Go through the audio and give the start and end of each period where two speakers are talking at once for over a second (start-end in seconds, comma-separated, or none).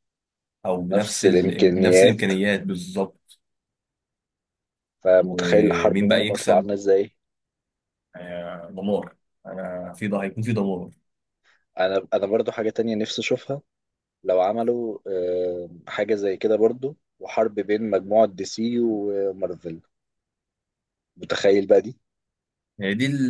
0.9-2.3, 5.2-6.7